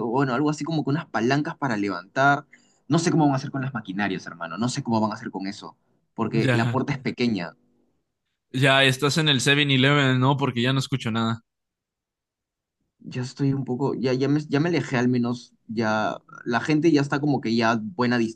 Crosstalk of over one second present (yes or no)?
no